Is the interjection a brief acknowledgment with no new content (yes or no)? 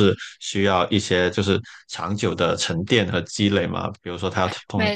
yes